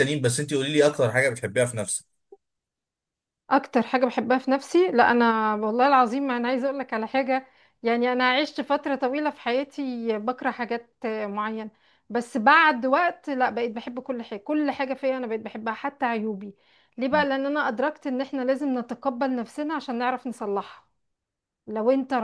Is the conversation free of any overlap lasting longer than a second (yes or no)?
yes